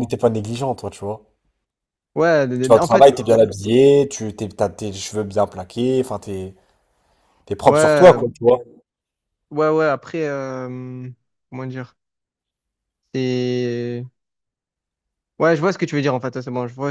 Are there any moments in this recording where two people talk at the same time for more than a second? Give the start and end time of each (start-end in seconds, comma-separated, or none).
none